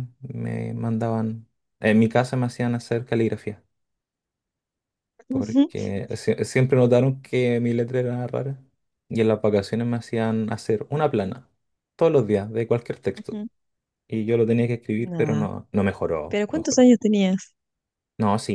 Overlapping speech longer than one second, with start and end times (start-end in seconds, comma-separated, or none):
none